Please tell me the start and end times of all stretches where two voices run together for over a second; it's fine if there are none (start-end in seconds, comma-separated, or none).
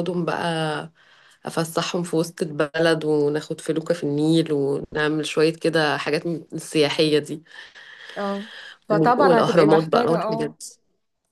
9.2-10.6